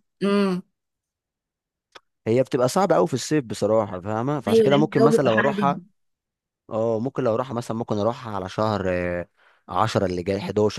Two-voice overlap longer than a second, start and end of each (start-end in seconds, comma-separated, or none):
4.5-5.8